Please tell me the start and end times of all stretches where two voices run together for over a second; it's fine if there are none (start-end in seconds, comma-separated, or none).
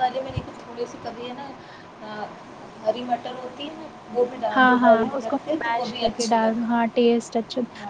4.5-6.8